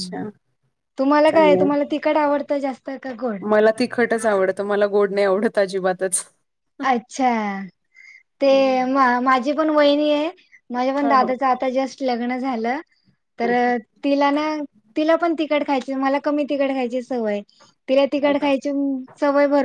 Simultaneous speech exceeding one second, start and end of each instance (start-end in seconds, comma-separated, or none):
none